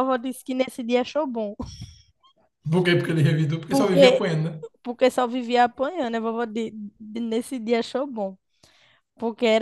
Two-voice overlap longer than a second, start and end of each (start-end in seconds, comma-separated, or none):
none